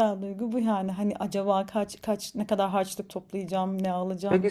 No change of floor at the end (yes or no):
no